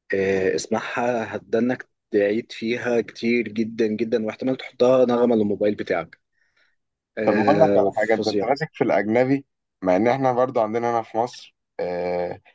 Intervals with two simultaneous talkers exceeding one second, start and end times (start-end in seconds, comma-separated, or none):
7.2-8.5